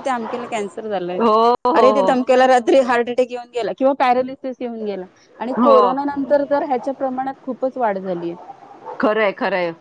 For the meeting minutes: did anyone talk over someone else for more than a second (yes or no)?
no